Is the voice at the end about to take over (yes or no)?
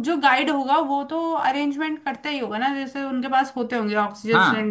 yes